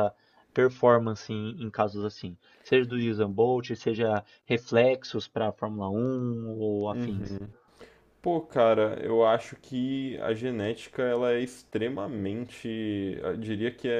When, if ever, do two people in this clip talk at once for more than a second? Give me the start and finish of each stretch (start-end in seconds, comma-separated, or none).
none